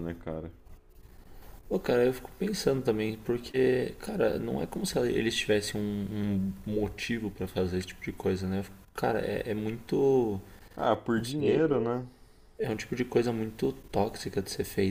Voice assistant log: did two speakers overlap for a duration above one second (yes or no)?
no